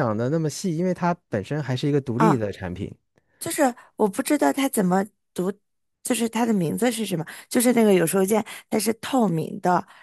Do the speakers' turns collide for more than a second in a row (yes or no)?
no